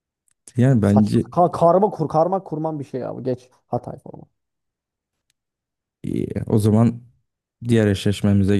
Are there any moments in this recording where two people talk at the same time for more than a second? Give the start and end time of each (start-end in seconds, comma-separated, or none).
none